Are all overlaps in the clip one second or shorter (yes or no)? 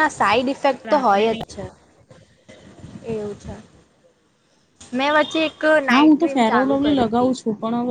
no